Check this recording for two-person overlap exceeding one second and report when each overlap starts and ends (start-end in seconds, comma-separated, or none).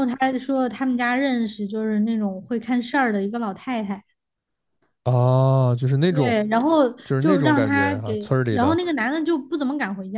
7.0-8.8